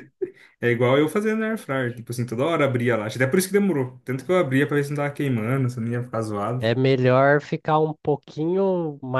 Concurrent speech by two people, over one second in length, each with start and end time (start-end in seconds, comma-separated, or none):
none